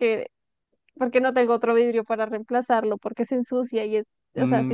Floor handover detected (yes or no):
yes